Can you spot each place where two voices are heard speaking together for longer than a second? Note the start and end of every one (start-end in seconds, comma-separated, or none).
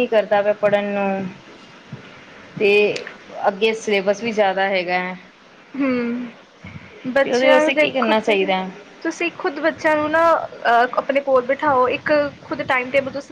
7.2-8.5